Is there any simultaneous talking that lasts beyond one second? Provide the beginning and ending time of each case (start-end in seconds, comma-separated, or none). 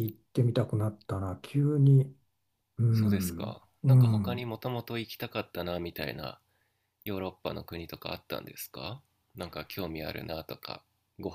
2.9-4.5